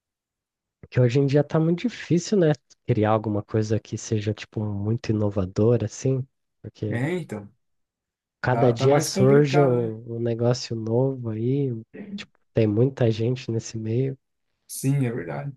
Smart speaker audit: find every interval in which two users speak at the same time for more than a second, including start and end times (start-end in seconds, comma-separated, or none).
8.5-9.9